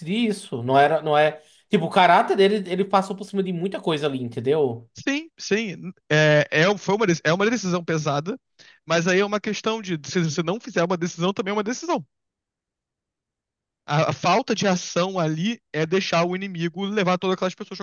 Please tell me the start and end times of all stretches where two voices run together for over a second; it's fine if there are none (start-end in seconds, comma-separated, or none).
none